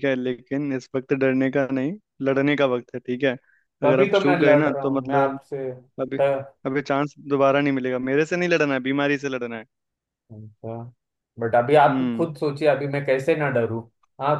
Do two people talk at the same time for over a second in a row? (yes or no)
yes